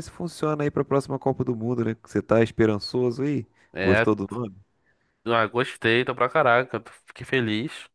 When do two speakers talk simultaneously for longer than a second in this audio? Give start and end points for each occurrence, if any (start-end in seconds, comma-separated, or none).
none